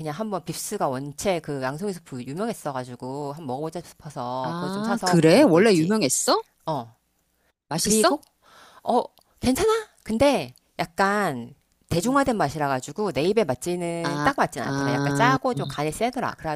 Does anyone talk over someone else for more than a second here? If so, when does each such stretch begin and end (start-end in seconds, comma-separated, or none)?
4.4-5.9, 14.0-15.4